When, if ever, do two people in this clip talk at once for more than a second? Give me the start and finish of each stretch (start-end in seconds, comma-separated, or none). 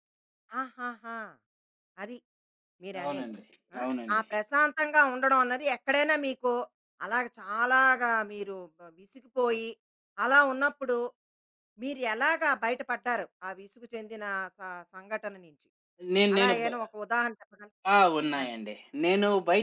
none